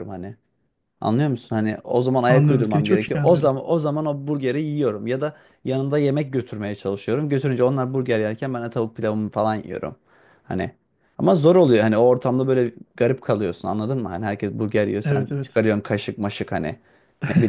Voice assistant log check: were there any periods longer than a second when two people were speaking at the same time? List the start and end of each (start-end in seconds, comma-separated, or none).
2.3-3.5